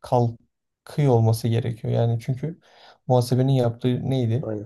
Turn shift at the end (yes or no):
no